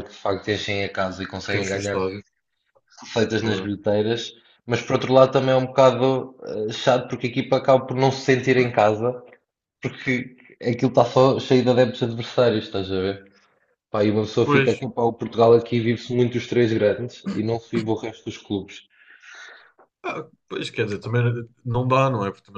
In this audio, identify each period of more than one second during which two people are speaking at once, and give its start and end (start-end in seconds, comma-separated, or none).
none